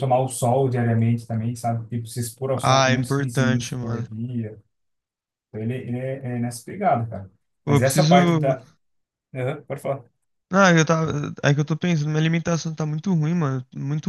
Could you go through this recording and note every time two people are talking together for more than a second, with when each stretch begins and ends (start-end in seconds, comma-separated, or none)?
2.6-4.1